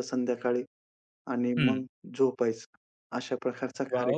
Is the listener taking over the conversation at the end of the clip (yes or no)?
yes